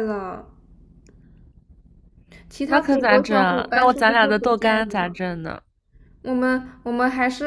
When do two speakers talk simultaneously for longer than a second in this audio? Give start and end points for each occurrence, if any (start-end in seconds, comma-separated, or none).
2.6-5.2